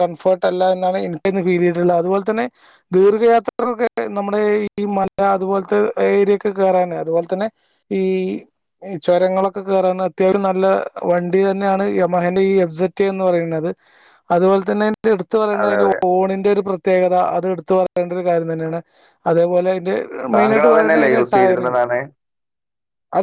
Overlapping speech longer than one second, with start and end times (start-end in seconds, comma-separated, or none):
20.4-21.8